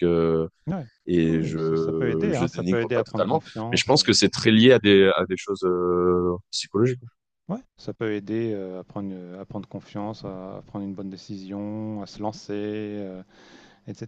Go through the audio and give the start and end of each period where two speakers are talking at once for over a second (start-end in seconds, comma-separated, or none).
1.3-4.0